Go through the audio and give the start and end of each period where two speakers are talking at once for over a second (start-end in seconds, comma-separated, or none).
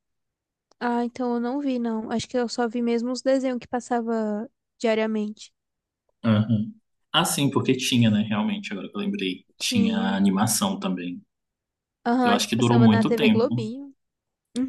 12.2-13.7